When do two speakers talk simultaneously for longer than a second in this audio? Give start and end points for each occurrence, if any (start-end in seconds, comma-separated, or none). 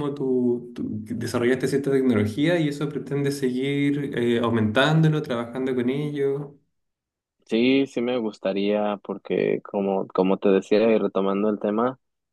none